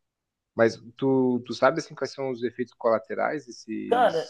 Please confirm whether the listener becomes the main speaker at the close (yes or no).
yes